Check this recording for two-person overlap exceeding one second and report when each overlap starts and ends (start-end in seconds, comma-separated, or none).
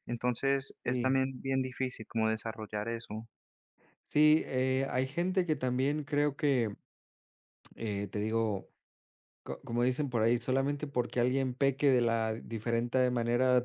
none